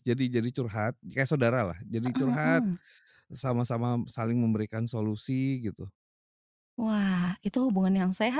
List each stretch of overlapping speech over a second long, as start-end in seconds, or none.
none